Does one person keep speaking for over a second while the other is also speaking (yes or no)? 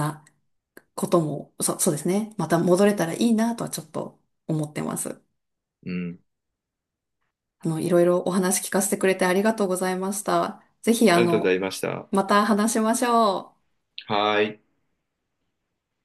no